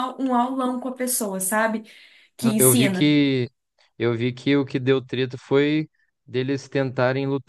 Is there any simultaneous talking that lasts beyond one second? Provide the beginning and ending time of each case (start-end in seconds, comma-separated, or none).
none